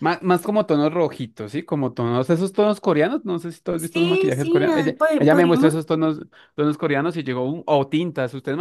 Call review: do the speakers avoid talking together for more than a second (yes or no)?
no